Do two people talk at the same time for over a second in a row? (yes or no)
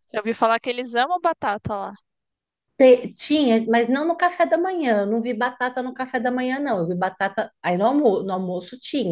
no